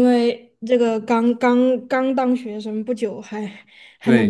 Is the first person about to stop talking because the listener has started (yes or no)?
yes